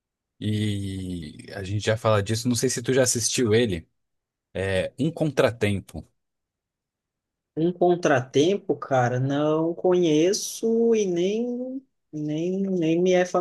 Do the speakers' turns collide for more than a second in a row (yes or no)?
no